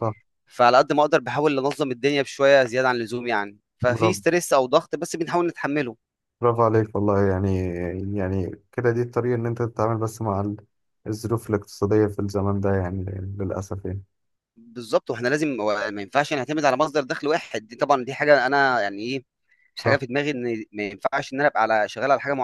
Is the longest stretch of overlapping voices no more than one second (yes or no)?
yes